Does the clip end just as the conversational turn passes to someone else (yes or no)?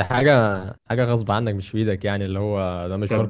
yes